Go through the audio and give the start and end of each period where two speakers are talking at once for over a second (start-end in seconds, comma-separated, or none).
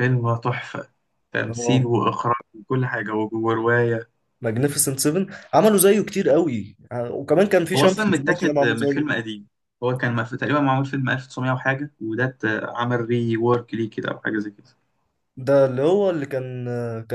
7.8-9.1